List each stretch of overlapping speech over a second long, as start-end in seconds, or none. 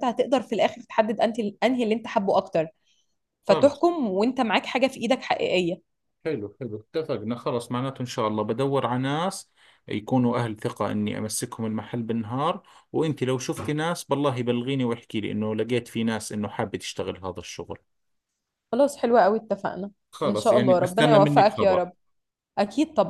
20.1-21.8